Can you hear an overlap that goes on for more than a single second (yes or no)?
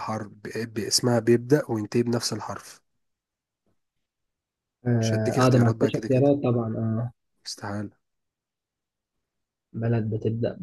yes